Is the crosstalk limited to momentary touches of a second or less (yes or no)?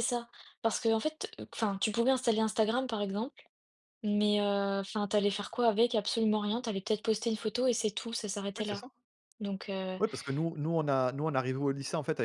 yes